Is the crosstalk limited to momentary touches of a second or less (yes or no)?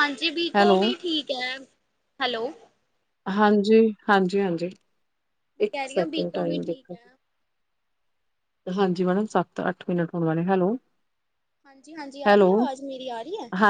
no